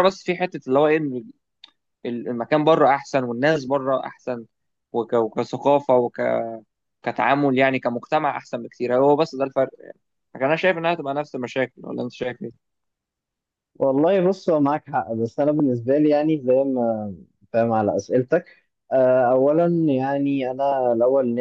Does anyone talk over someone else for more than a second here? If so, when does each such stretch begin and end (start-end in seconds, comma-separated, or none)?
none